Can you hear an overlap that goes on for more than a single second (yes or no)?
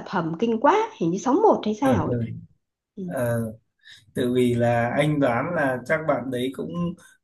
no